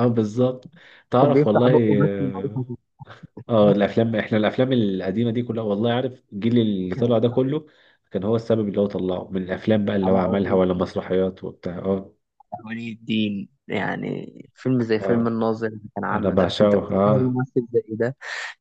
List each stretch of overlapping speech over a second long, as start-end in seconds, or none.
1.2-2.6, 16.1-17.4